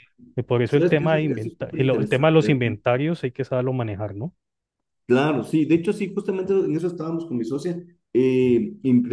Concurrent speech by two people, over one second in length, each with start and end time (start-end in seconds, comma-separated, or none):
0.7-2.6